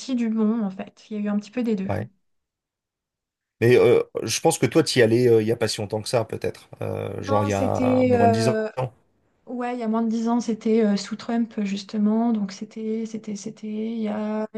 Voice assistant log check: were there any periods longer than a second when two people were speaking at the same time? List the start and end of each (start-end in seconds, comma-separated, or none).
7.3-8.6